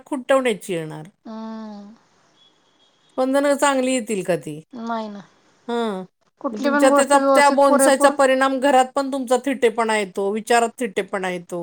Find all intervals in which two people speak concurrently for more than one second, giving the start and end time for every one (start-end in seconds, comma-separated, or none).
6.6-8.1